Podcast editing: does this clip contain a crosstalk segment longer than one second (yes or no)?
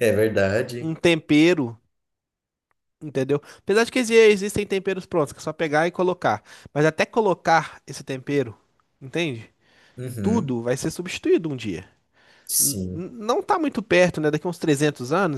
no